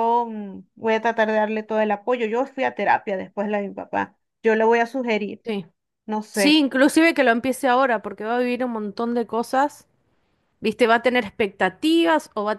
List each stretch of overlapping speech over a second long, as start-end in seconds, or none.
none